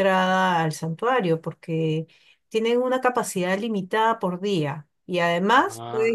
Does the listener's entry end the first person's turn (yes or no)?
no